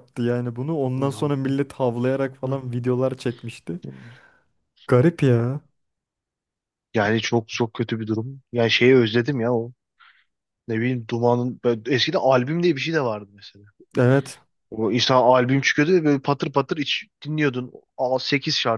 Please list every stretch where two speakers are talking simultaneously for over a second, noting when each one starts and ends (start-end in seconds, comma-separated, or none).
none